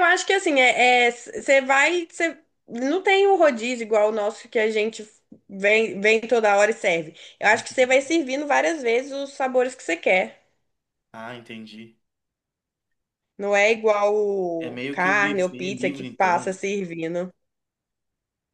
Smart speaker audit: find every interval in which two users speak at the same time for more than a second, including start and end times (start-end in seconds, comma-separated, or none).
14.6-16.6